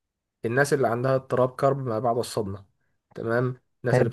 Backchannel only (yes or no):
yes